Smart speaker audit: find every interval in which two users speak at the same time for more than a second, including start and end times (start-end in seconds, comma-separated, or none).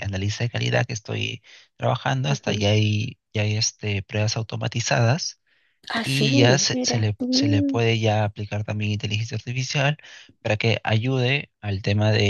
6.0-7.8